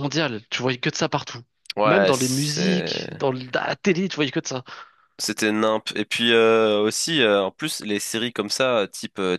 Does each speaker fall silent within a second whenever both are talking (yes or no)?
no